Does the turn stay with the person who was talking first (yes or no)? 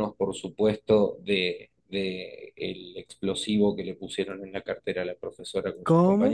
no